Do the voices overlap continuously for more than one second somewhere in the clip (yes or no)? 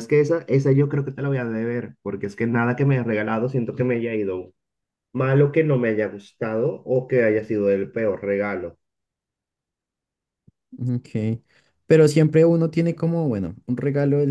no